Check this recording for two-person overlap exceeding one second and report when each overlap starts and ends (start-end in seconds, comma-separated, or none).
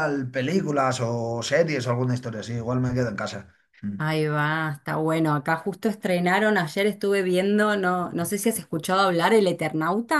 none